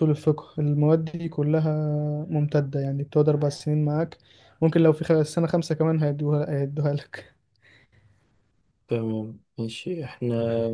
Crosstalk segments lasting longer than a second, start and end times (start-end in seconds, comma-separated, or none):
none